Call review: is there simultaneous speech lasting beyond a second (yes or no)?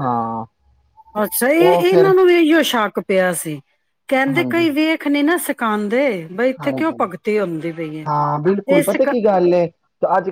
no